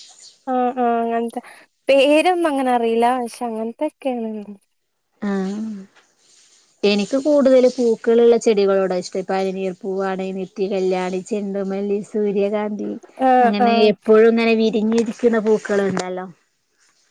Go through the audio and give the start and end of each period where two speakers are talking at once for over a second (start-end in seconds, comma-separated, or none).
none